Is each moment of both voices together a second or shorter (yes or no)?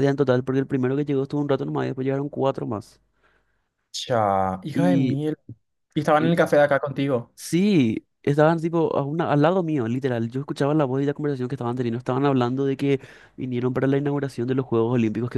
yes